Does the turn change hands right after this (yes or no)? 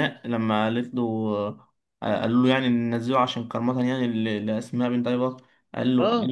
no